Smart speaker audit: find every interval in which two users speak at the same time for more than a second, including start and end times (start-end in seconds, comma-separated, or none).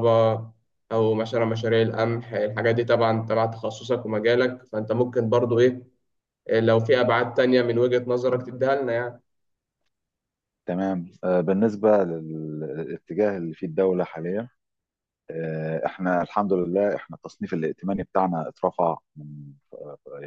none